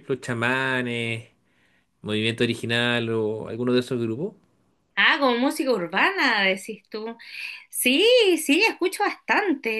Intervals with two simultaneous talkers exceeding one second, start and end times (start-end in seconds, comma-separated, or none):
none